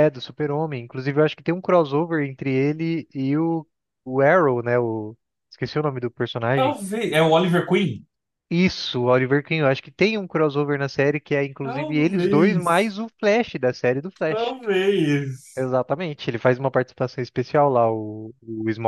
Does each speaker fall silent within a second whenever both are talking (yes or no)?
no